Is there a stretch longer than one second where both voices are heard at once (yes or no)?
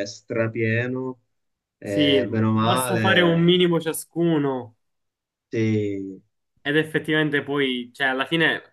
yes